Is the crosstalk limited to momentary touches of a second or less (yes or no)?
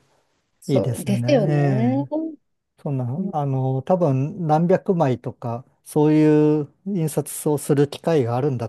no